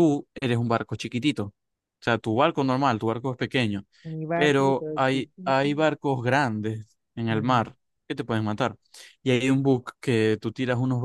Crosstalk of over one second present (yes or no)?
yes